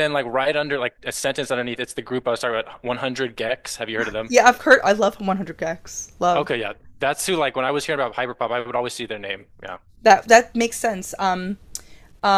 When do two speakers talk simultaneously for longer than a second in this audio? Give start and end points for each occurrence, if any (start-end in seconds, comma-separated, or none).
none